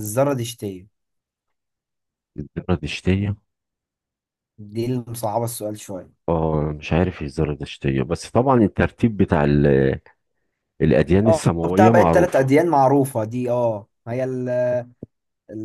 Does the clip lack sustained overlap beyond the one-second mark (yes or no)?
no